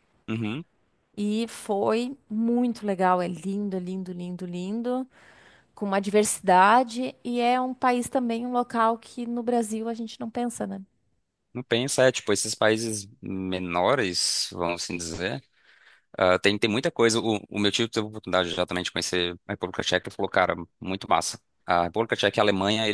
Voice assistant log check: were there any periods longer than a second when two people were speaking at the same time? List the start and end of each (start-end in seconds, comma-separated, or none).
none